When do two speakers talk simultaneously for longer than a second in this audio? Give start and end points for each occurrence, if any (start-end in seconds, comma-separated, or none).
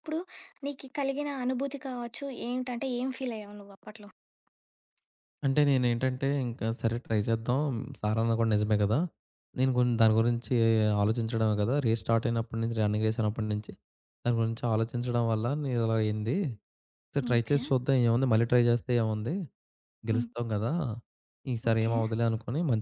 none